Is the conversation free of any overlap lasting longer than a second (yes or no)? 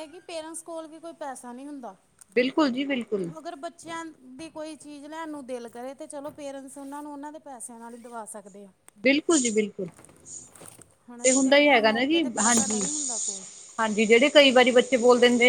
no